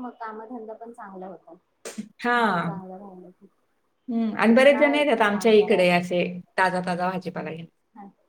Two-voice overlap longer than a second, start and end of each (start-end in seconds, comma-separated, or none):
4.5-6.0